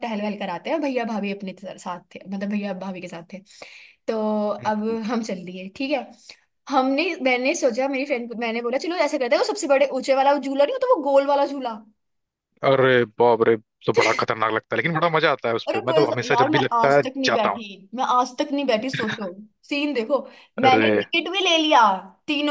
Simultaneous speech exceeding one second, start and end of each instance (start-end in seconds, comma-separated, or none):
15.7-17.6